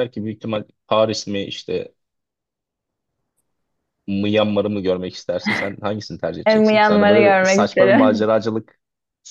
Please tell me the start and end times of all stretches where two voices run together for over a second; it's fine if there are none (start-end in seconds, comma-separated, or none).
6.5-8.3